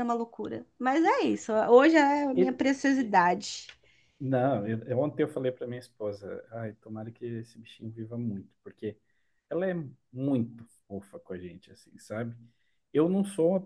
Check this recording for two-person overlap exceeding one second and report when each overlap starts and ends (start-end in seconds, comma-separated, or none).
none